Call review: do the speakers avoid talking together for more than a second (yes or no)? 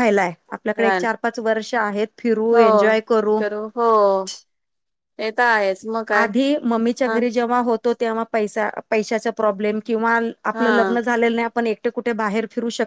yes